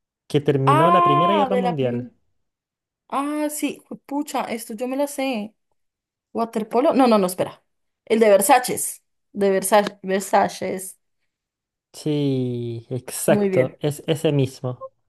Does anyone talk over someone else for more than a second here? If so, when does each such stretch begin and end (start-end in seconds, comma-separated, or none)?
0.7-2.1